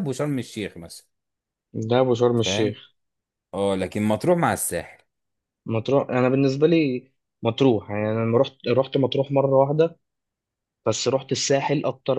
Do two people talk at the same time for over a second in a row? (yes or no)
no